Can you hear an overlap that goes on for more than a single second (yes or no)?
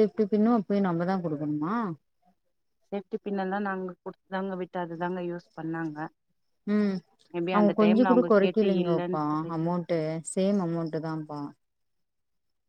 yes